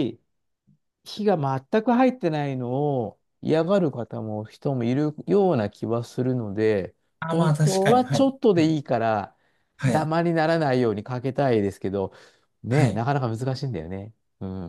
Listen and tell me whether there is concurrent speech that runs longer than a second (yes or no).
yes